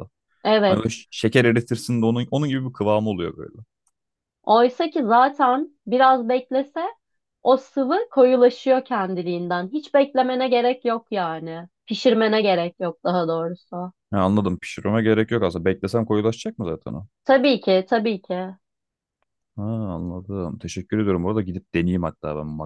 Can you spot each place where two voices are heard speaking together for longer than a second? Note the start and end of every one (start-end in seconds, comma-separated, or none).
none